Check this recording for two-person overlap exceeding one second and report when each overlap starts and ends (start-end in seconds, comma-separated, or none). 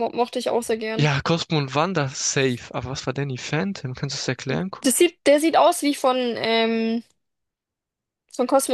none